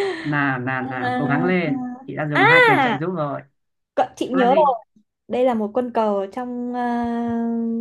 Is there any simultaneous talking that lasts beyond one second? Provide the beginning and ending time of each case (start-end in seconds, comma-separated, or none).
0.8-2.6